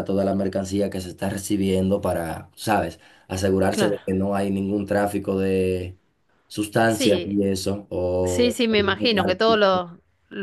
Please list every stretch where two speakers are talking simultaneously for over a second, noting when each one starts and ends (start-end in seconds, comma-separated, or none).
8.2-9.8